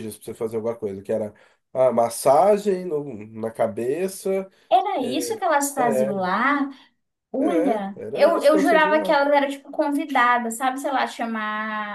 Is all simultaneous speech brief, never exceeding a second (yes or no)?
no